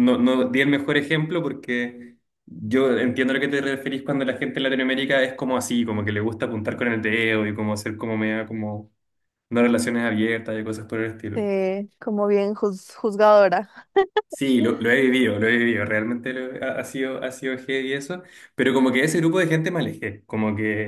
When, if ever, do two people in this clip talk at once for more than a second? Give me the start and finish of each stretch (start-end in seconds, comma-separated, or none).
none